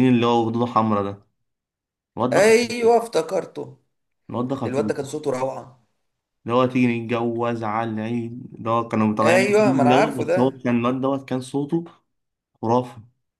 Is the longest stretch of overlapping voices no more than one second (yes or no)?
no